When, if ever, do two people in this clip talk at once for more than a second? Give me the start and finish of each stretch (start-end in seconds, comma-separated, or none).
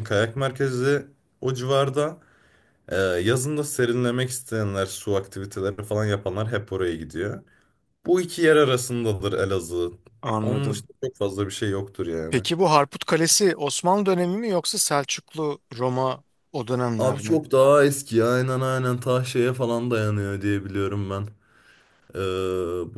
none